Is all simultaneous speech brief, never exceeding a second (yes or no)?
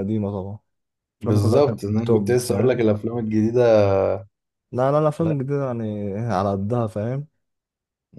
no